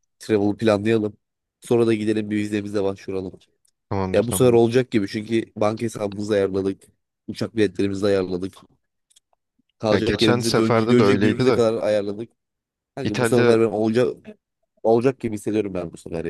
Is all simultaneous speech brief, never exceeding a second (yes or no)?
no